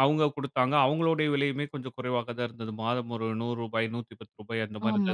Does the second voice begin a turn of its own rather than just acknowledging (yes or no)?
yes